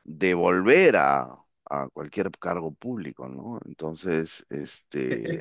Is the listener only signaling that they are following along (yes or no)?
no